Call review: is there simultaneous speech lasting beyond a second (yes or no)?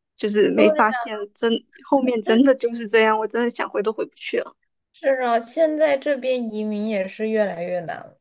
no